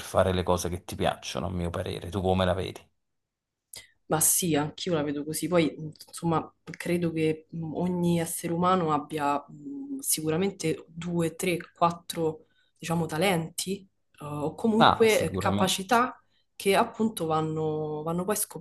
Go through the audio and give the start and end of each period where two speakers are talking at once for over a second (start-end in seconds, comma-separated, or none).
14.8-16.0